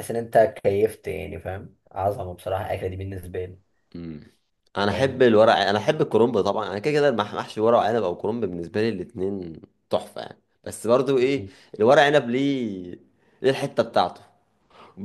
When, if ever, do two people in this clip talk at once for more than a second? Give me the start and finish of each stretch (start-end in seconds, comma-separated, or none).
none